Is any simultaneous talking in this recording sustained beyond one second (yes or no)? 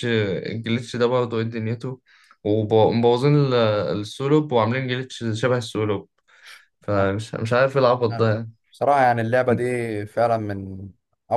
no